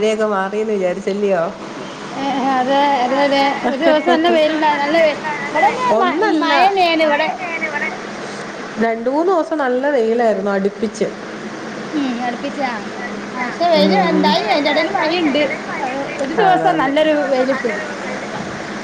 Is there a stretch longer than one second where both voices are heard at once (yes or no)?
no